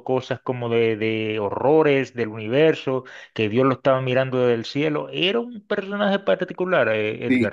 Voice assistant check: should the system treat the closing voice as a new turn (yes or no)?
yes